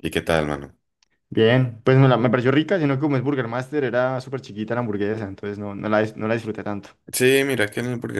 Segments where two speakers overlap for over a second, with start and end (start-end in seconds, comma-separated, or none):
none